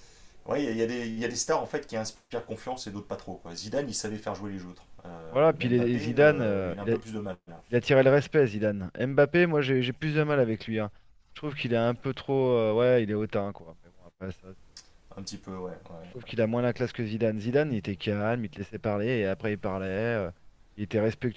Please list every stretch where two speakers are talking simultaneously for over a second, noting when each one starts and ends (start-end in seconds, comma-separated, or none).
5.3-7.0